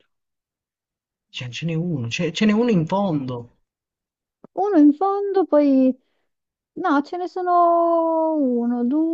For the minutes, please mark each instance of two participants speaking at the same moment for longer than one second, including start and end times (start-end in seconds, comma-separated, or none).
none